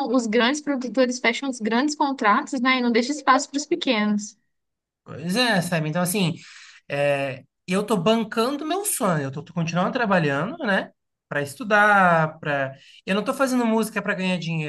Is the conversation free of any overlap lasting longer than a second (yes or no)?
yes